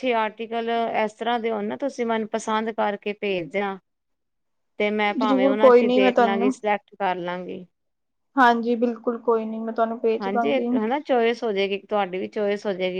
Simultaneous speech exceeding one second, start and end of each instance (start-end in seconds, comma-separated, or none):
5.2-6.5